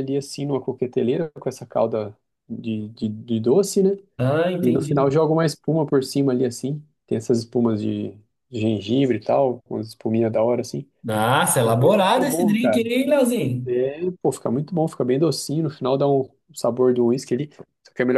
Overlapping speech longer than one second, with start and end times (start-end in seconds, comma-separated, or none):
11.6-12.8